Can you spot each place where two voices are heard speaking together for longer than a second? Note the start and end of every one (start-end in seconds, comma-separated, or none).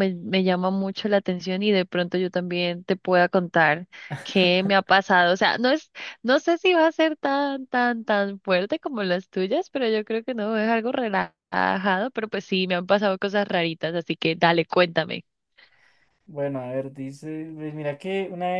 none